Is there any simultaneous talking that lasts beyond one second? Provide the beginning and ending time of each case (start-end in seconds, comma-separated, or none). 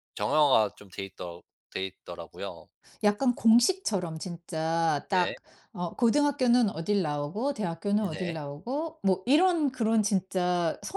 none